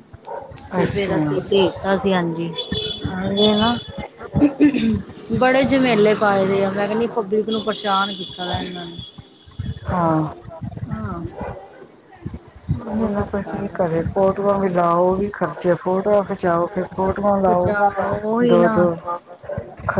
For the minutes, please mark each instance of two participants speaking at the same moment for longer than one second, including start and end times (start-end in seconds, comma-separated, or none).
none